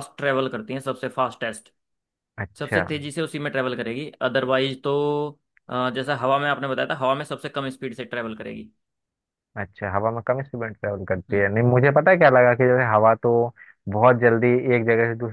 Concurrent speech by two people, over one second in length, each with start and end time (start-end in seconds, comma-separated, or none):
none